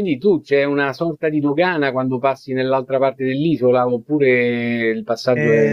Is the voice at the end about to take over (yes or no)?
yes